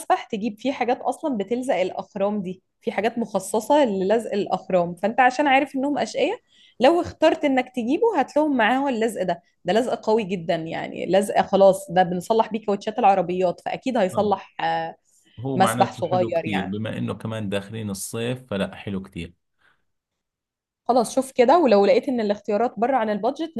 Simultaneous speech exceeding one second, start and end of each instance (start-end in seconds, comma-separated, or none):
15.5-16.8